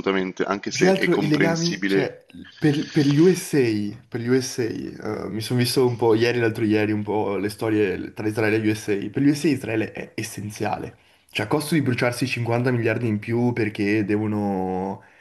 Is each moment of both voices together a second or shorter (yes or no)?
no